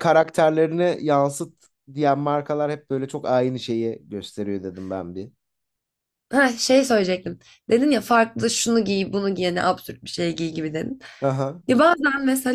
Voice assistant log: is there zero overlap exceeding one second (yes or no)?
yes